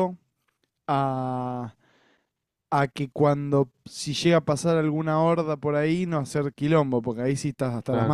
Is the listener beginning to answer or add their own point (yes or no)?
yes